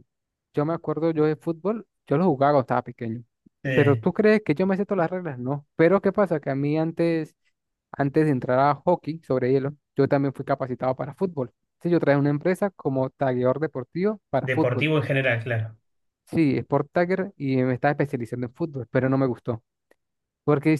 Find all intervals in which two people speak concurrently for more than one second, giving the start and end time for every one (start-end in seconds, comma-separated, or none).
none